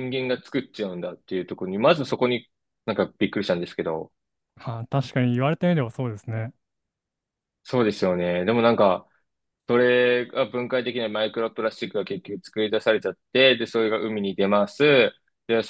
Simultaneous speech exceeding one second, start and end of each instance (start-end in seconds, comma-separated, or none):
none